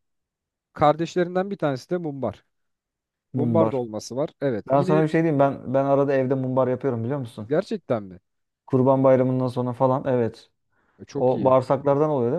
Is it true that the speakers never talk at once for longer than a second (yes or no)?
yes